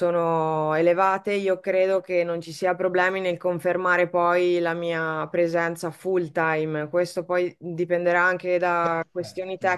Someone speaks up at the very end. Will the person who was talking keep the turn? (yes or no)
yes